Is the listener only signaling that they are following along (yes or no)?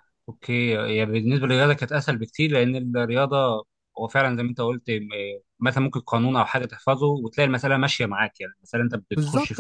yes